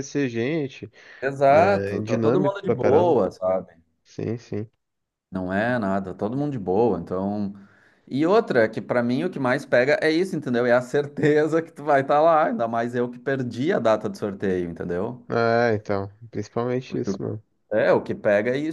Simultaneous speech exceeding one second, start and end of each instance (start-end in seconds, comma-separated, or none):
1.5-3.2